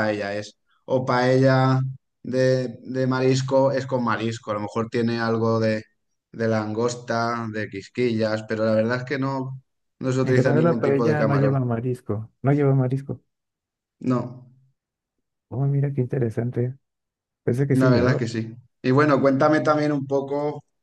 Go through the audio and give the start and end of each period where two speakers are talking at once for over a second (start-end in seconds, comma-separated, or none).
10.2-11.6